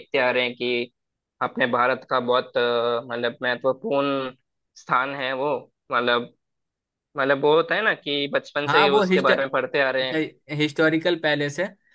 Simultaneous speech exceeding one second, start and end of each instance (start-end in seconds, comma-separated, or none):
8.7-10.2